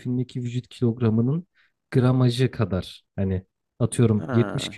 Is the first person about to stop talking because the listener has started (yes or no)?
no